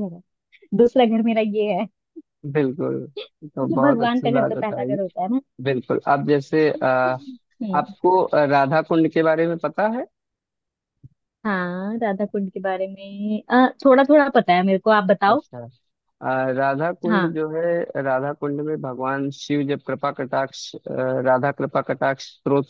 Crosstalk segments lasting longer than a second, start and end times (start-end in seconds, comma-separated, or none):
3.5-5.0